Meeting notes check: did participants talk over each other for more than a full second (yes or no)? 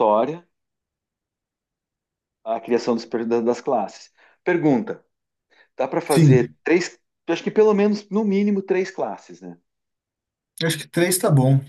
no